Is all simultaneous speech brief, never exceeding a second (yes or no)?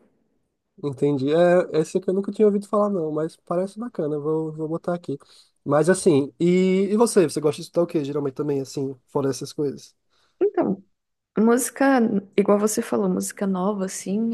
yes